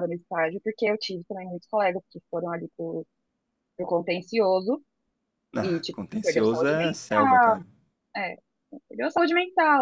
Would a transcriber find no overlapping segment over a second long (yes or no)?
no